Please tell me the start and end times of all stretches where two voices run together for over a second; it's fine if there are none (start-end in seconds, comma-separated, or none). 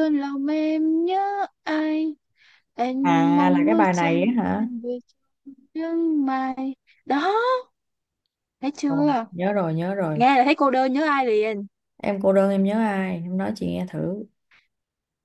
3.4-4.7